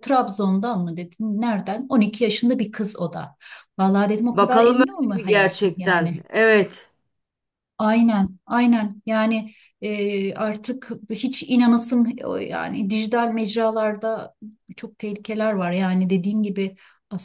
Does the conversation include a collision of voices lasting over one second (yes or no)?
yes